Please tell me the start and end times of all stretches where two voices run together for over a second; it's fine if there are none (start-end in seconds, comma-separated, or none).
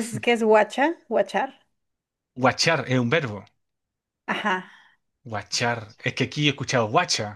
none